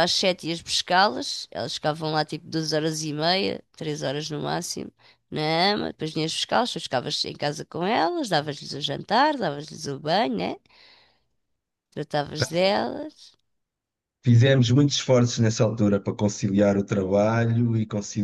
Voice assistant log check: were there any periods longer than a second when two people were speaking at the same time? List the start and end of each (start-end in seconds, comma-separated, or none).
none